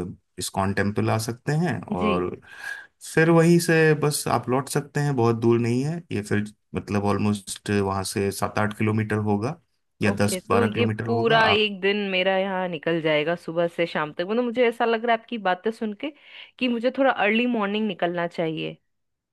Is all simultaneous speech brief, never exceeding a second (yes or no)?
no